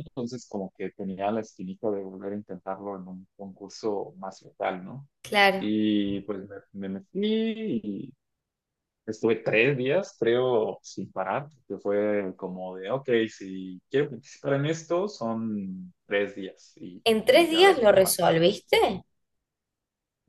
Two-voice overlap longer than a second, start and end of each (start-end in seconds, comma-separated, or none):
17.1-18.4